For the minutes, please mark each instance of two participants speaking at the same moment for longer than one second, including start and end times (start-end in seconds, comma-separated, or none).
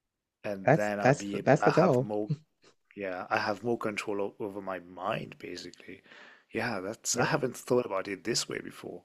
0.6-2.1